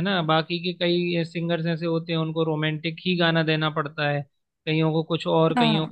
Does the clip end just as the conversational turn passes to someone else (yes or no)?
no